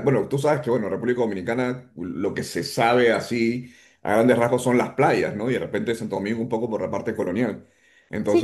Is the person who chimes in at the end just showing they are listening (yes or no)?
yes